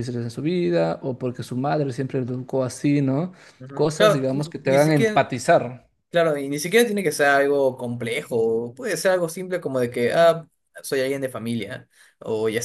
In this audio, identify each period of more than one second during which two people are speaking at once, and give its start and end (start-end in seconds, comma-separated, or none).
3.7-5.2